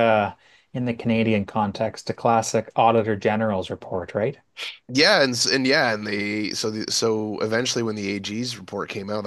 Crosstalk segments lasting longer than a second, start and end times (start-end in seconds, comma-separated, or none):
none